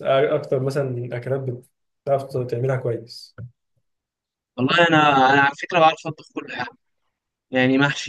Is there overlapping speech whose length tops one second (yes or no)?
no